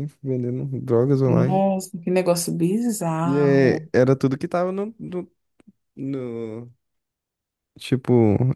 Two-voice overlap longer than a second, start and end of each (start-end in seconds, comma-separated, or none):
none